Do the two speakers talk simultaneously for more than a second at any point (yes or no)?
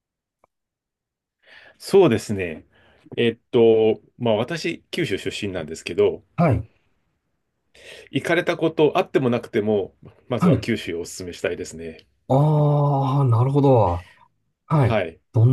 no